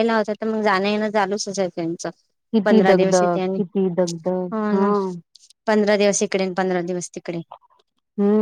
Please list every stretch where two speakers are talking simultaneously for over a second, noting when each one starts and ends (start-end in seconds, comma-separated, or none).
2.6-4.9